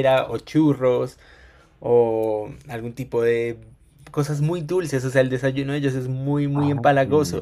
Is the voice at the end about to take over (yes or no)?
no